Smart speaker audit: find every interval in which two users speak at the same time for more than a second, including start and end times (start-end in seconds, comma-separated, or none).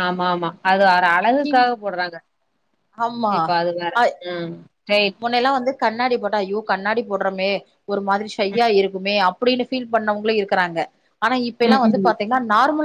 none